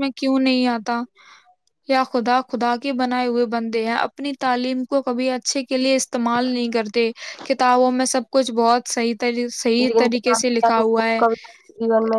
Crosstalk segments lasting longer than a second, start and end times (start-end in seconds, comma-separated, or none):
9.9-11.2